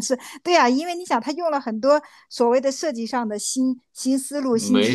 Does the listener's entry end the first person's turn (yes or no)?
no